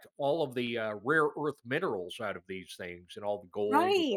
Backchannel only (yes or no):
no